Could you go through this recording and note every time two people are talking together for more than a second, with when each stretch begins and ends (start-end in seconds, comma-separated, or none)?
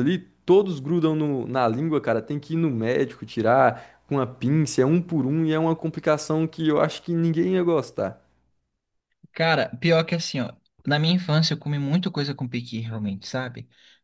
none